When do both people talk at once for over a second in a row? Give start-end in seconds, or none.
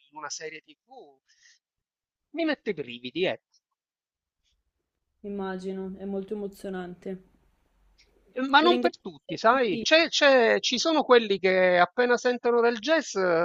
8.6-9.9